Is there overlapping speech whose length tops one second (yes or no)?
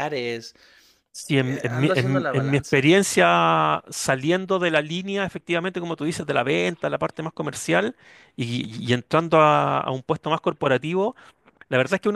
yes